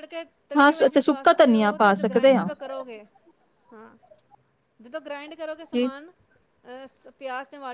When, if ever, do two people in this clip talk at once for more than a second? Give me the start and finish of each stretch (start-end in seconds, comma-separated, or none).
0.6-2.5